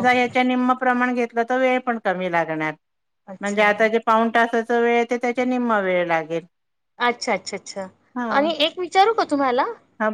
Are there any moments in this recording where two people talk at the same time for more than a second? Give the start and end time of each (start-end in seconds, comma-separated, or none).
none